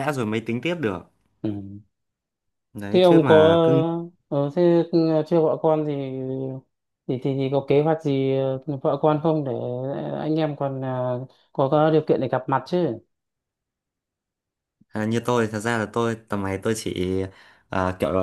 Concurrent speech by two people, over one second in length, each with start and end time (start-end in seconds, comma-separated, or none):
none